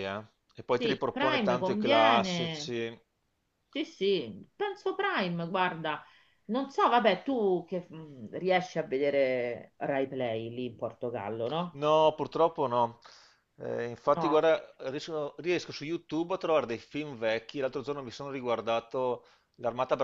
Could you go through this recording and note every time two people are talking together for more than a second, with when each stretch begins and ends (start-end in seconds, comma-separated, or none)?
0.8-2.7